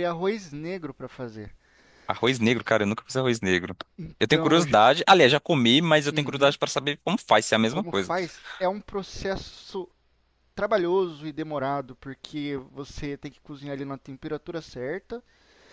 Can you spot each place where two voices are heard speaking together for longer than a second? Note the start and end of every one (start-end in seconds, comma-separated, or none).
none